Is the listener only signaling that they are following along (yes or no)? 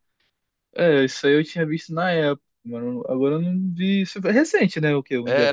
no